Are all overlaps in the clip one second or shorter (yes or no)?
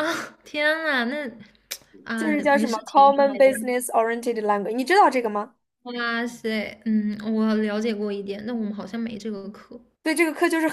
no